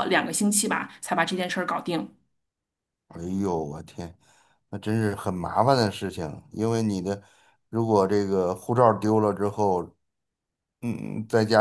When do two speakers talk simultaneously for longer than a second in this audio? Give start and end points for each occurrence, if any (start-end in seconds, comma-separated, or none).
none